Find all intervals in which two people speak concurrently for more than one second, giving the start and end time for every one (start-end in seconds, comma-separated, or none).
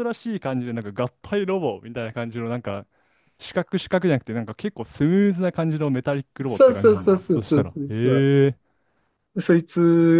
6.5-8.3